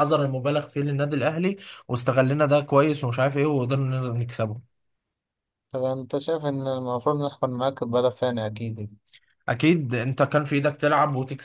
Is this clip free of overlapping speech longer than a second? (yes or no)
yes